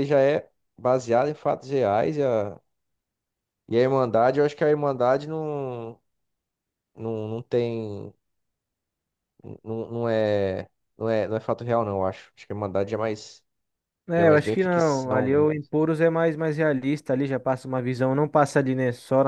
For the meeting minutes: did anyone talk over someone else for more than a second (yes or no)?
yes